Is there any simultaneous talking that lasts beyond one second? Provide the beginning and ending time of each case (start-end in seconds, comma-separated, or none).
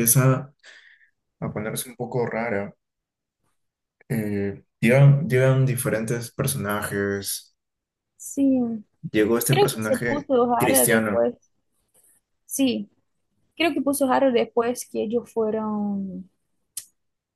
9.5-11.2